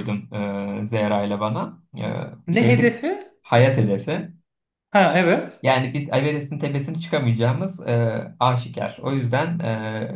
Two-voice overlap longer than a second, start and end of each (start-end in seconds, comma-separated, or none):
none